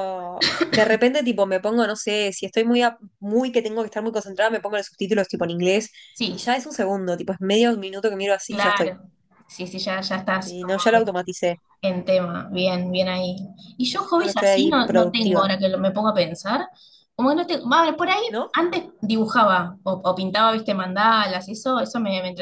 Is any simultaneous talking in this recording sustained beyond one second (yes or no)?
yes